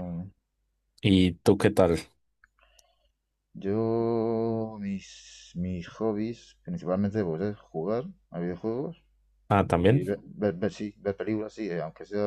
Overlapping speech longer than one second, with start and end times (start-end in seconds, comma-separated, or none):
none